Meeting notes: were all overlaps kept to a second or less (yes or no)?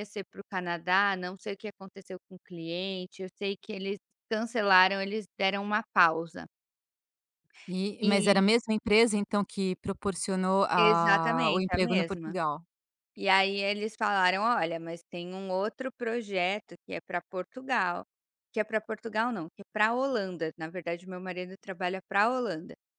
no